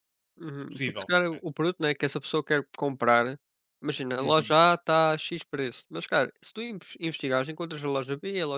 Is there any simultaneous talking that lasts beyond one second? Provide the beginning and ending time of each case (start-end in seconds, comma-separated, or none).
0.5-1.9